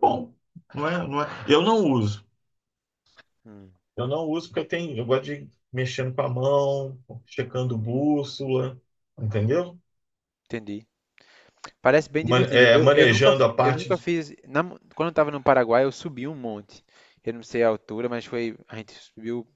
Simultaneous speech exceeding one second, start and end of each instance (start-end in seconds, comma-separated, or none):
12.2-14.1